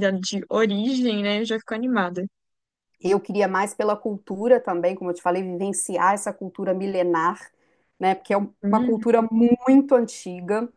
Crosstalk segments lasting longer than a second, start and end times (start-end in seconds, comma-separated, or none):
none